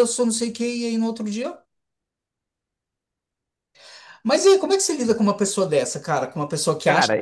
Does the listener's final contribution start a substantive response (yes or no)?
yes